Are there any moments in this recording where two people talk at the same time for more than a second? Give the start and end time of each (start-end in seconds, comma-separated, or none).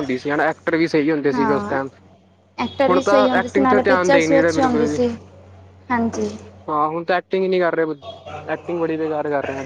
2.9-5.0